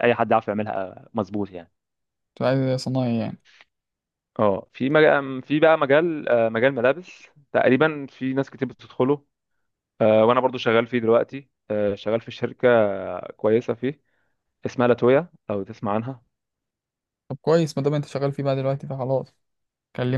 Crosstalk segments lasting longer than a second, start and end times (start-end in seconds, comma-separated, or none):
none